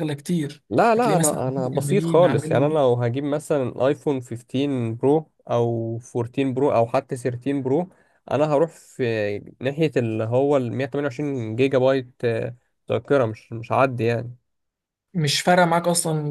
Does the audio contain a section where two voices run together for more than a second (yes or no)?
yes